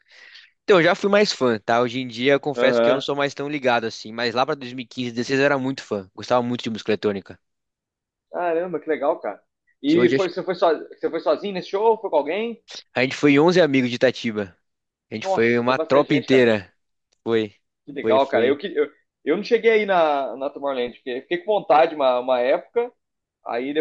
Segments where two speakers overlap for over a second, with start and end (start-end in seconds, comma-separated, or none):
15.2-16.5